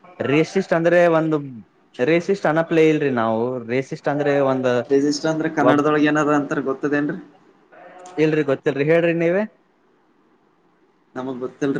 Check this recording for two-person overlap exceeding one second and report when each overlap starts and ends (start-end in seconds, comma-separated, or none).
none